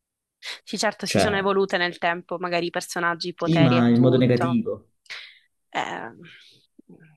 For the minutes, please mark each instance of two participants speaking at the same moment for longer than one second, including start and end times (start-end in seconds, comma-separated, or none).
3.4-4.6